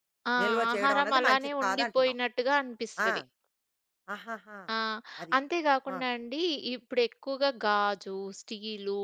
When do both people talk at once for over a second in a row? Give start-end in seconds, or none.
0.7-2.2